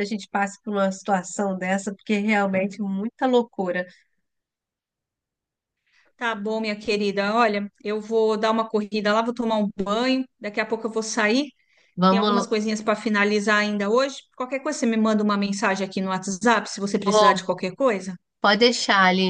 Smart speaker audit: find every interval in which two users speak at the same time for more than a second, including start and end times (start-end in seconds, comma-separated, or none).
none